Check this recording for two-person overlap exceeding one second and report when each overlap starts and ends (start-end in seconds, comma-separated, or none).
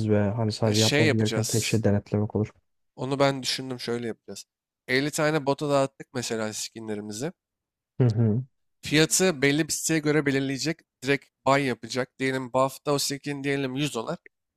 0.6-1.8